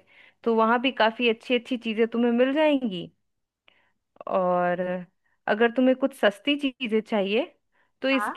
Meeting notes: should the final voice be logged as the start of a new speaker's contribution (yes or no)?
no